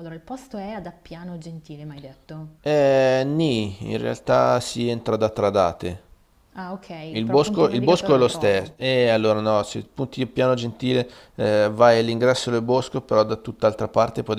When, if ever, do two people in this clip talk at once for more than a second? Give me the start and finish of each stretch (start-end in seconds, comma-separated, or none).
7.1-8.7